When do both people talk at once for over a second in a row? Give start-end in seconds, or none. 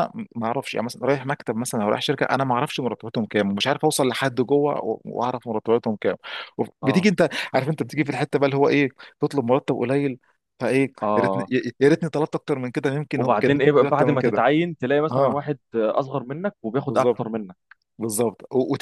13.1-14.4